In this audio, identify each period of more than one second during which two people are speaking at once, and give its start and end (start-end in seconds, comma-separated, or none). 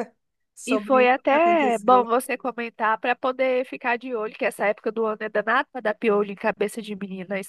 0.7-2.1